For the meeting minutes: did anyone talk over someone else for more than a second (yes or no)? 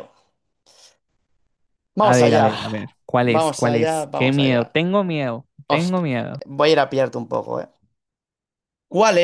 yes